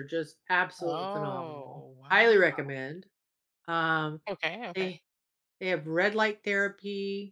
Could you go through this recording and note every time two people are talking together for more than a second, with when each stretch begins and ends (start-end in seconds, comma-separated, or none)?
0.8-2.6